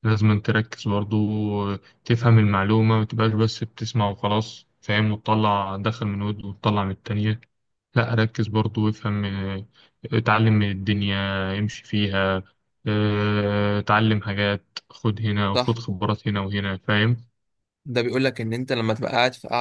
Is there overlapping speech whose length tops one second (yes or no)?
no